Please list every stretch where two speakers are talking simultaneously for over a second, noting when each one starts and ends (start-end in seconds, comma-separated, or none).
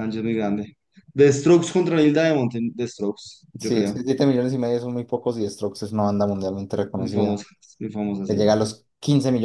none